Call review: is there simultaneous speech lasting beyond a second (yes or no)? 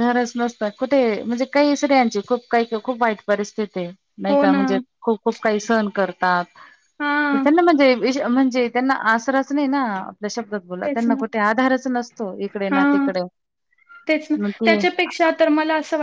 no